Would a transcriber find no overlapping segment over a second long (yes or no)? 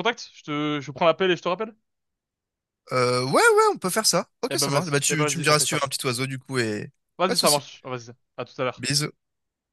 no